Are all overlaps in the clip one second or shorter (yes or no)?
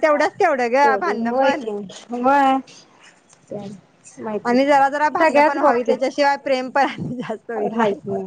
no